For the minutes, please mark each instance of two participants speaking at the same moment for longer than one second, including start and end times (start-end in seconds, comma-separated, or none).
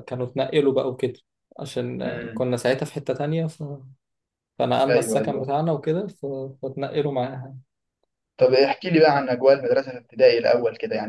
none